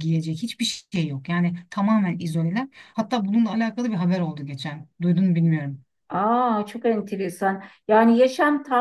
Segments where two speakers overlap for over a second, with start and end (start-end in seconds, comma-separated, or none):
none